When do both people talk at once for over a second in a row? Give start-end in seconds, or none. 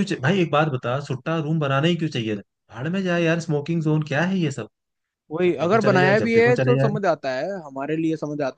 5.4-6.9